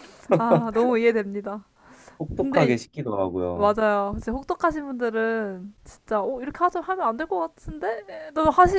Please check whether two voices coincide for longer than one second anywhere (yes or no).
no